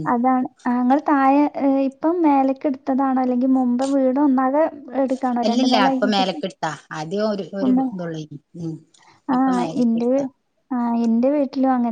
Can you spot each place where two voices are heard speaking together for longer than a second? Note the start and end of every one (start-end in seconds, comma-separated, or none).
none